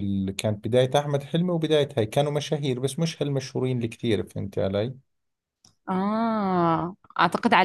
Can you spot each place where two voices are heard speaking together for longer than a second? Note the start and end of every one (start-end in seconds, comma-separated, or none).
none